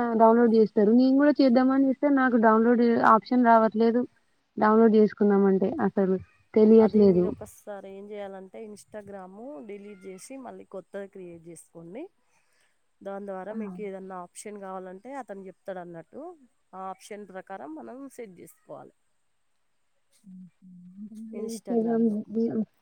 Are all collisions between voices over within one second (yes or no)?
yes